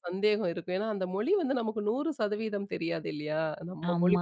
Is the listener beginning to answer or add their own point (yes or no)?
yes